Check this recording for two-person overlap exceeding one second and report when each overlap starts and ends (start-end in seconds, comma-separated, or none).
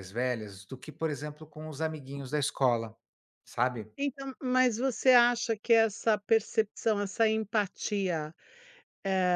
none